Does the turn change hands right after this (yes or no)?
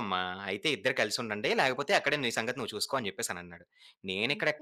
no